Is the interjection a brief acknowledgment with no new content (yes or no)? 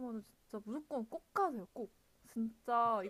yes